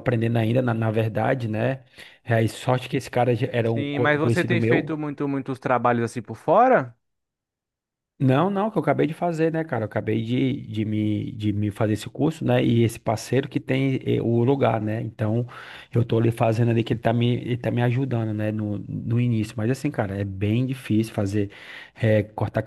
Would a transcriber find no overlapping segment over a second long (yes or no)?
no